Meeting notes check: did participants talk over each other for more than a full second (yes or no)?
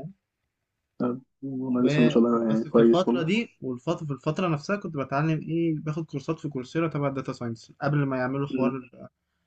yes